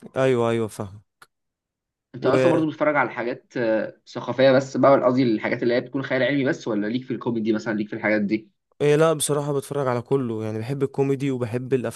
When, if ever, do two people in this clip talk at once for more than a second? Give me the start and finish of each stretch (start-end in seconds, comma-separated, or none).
none